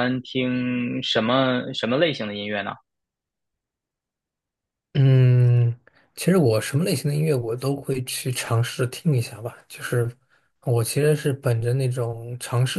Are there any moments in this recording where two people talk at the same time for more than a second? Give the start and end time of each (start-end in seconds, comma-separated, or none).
none